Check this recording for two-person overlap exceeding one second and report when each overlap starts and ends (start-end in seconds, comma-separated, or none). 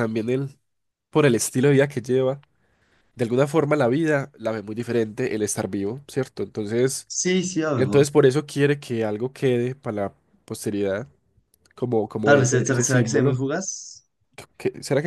12.2-13.5